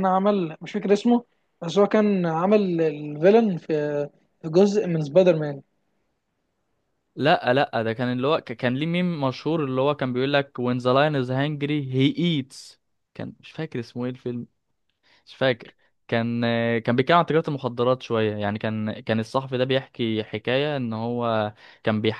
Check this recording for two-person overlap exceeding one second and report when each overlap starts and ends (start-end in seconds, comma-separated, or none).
none